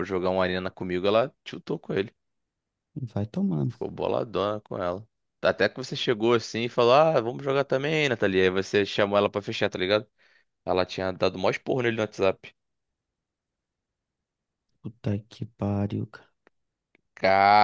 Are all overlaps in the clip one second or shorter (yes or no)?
yes